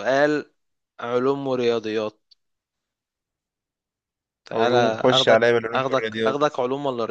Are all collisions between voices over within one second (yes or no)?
no